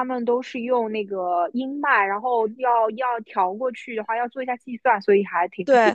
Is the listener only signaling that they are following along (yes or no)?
no